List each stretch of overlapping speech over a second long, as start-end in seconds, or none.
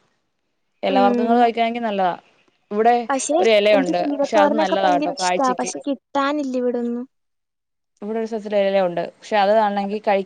3.7-5.7